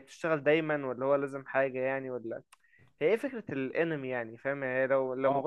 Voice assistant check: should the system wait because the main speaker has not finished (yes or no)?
yes